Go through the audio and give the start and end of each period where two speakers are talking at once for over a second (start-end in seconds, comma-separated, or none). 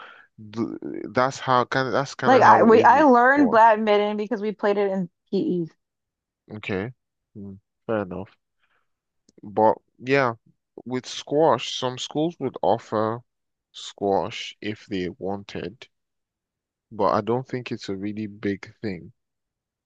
2.3-3.6